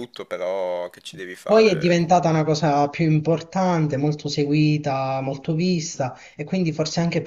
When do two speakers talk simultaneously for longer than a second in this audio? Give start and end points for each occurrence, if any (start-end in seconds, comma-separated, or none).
none